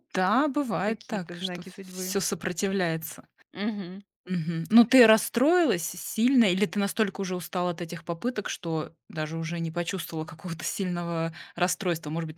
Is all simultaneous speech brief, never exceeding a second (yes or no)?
no